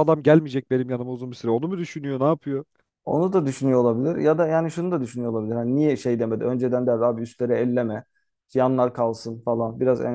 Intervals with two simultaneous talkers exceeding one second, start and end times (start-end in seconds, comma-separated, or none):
none